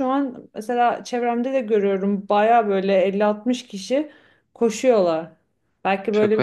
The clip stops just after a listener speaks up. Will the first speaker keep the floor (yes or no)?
yes